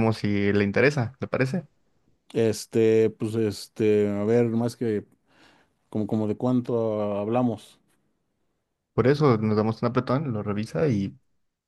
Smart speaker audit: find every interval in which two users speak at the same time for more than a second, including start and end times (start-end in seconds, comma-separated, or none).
none